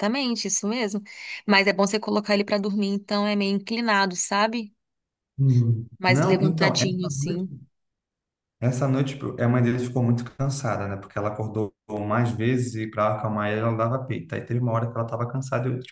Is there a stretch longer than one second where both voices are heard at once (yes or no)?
yes